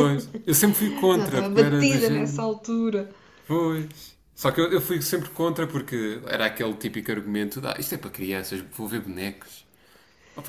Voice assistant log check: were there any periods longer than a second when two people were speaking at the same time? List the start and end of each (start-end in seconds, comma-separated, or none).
1.1-2.5